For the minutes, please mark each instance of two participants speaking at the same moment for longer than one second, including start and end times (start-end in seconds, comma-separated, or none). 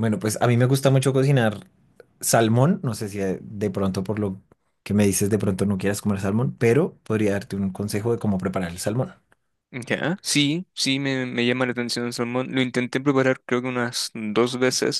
none